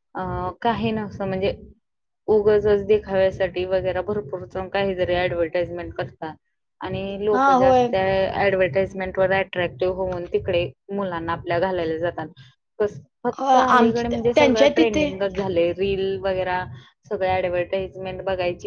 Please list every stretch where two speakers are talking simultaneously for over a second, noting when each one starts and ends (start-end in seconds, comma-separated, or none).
13.4-15.1